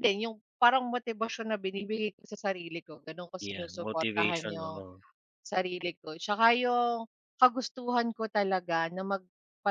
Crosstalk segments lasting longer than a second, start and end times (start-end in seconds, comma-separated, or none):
3.4-4.8